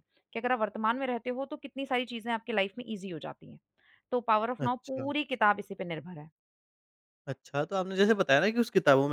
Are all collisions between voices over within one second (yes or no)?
yes